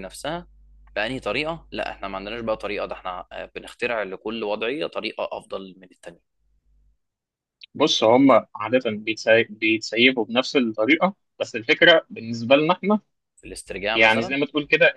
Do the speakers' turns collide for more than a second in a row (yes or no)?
no